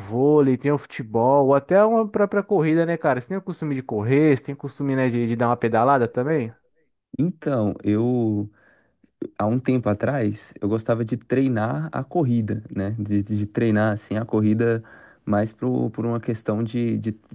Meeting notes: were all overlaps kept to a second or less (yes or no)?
yes